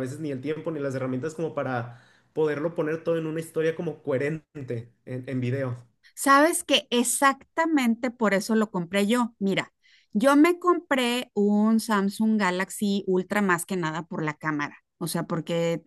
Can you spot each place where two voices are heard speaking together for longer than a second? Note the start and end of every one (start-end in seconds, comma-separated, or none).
none